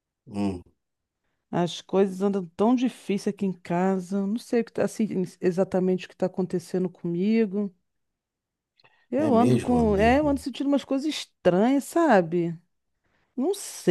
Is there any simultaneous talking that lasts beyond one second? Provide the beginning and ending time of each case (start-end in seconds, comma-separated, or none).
9.1-10.4